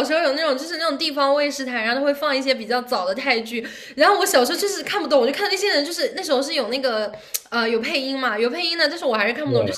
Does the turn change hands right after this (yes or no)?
no